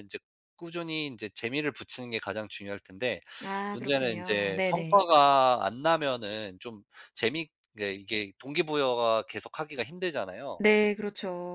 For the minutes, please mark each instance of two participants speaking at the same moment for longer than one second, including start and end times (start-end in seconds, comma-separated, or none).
3.7-5.0